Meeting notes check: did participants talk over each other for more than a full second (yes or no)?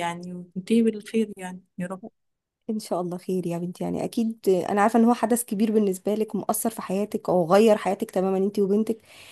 no